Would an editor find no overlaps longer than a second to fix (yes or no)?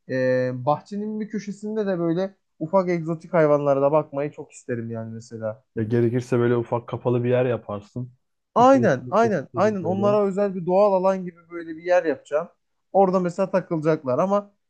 no